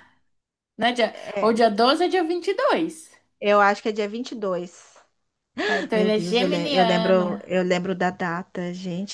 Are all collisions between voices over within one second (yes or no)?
no